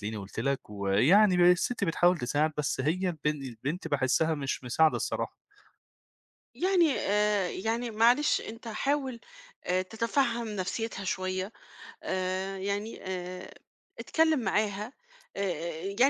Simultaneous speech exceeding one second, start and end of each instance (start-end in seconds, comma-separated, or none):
none